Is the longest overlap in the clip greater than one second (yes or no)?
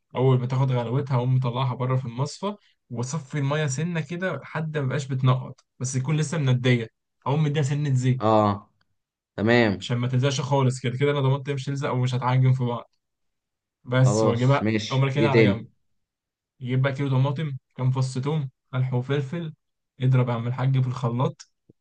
yes